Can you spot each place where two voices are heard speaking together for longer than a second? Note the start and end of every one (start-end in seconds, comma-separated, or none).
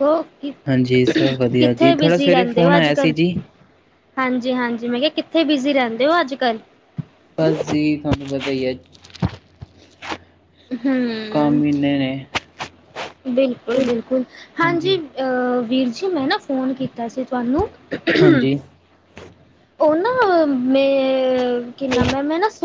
1.6-3.1